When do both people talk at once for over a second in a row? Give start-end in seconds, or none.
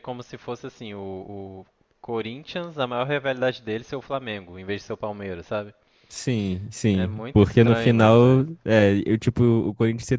6.9-8.6